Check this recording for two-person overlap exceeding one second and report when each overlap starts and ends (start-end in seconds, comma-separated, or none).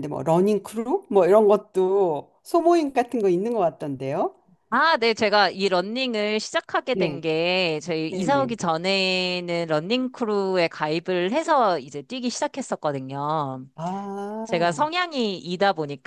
none